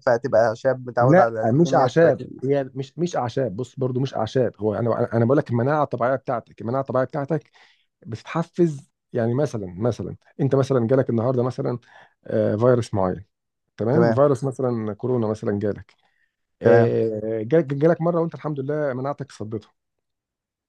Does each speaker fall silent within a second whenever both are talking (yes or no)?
no